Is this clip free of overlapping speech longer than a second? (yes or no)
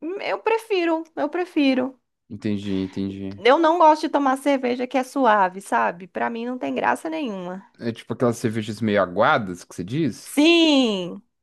yes